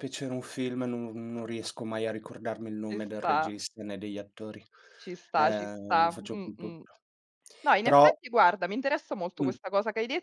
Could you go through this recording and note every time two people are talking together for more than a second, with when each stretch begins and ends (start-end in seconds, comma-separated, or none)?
5.3-6.8